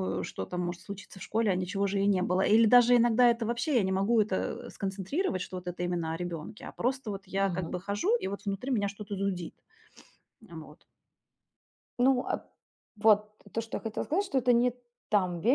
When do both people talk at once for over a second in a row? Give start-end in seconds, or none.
none